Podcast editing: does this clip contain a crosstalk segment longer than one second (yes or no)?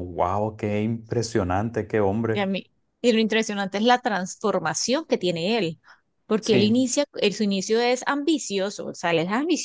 no